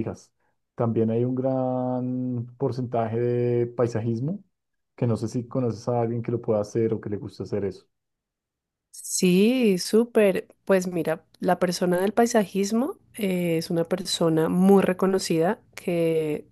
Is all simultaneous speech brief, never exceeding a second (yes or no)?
yes